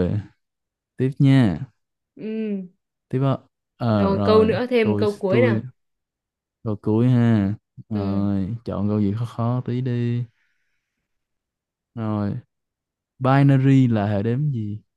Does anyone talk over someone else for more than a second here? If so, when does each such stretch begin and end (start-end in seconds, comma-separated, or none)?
3.9-5.6